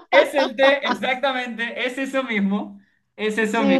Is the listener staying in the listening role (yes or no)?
no